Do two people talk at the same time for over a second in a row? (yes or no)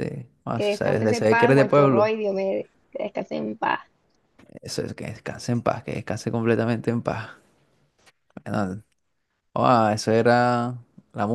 yes